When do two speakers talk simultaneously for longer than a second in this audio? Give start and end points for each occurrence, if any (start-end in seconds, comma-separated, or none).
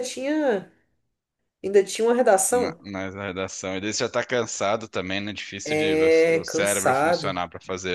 5.6-7.4